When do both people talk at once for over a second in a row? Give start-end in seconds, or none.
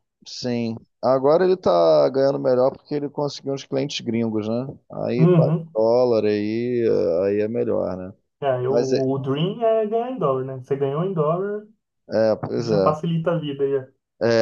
none